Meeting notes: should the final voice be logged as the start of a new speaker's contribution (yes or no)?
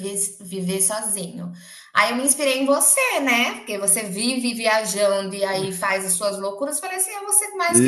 yes